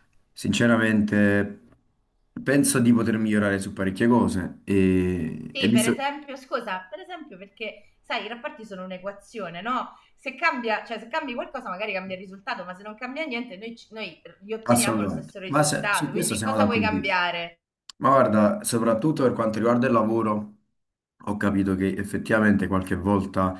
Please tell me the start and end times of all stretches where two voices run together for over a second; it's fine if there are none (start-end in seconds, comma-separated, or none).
14.7-16.9